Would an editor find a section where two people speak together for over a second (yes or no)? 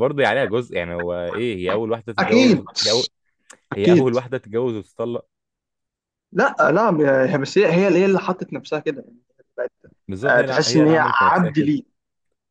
yes